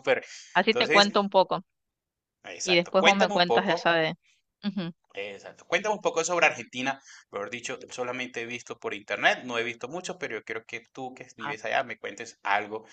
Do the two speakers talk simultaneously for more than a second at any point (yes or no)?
yes